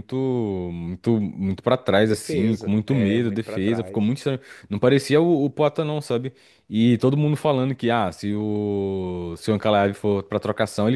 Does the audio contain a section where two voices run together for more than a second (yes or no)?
yes